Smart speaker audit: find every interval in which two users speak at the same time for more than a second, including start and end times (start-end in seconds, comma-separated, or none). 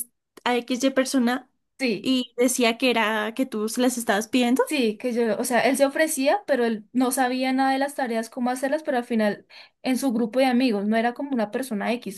none